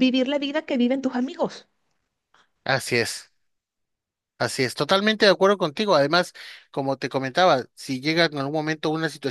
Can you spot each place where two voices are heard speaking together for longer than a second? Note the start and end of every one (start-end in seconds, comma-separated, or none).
none